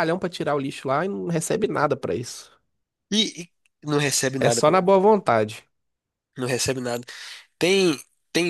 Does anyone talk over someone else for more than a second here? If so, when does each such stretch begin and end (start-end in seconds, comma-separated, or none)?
none